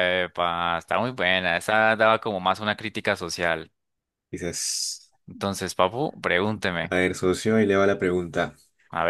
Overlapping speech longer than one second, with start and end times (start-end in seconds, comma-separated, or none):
none